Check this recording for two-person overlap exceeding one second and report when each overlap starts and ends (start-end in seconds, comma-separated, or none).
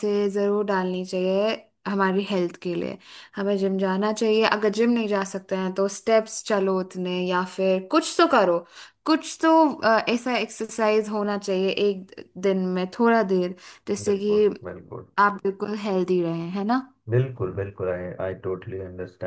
none